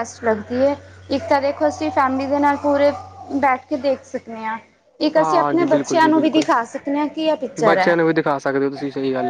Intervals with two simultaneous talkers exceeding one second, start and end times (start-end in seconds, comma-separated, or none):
5.2-6.5